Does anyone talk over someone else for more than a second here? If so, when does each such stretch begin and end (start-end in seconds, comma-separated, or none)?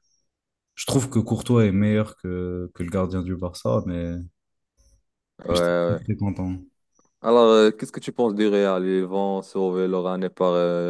none